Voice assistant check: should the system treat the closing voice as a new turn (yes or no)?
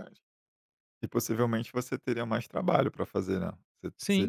no